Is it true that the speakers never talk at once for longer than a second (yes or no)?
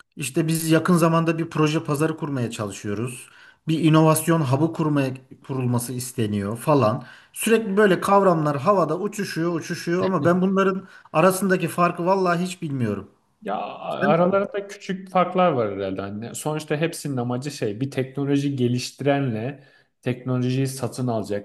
yes